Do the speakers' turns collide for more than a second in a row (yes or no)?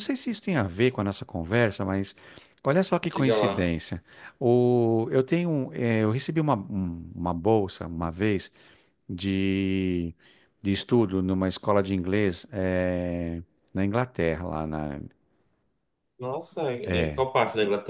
no